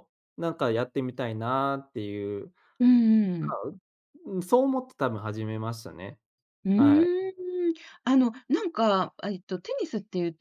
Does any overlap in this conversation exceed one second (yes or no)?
no